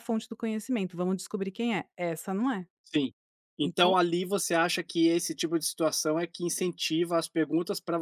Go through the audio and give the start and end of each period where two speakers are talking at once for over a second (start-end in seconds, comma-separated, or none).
none